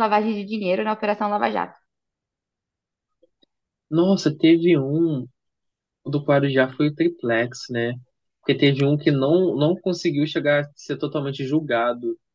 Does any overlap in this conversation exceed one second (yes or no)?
no